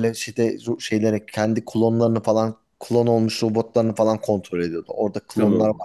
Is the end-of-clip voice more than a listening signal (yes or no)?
no